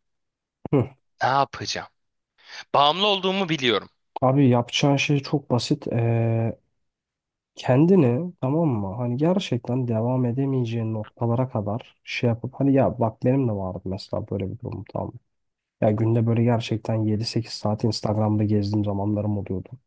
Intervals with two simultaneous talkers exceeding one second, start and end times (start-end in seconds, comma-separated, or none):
none